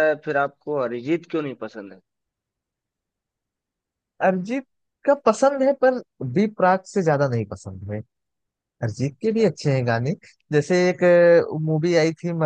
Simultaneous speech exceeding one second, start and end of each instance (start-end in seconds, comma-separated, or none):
none